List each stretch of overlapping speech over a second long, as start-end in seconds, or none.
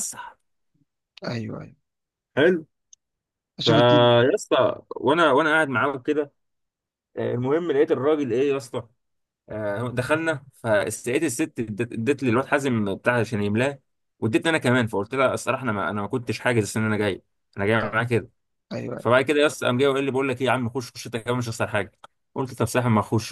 none